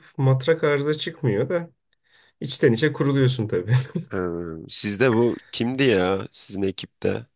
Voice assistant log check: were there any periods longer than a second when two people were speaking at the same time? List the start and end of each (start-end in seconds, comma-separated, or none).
none